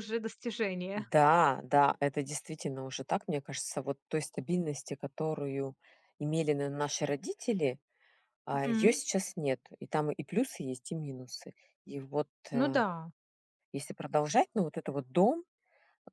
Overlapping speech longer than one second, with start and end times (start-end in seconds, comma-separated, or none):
none